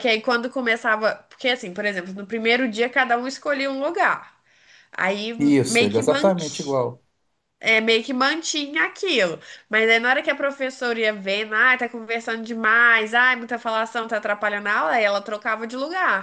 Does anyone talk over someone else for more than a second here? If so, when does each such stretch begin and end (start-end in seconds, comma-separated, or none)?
5.4-6.8